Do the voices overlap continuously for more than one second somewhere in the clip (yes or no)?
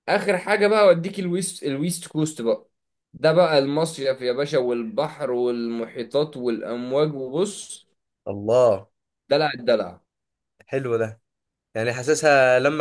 no